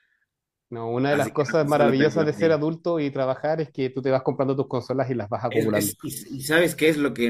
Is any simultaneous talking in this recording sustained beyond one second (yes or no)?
yes